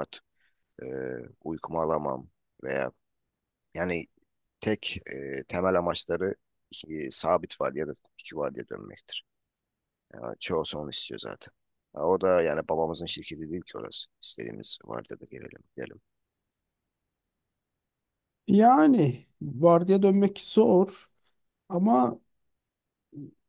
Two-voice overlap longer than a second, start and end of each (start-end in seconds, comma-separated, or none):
none